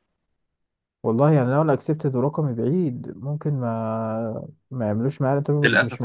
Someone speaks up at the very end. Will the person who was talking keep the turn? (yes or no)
no